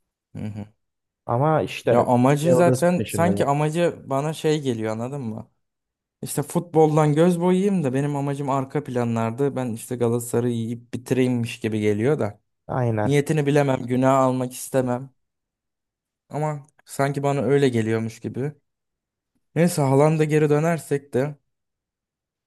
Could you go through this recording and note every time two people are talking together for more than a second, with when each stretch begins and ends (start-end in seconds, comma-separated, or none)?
1.9-3.5